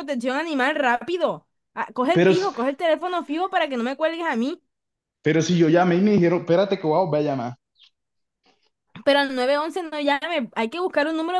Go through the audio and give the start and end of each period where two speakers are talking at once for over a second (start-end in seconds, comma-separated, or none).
none